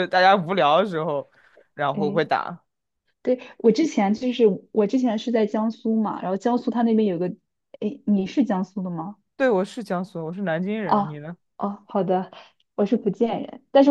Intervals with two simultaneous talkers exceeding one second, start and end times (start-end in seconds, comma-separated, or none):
none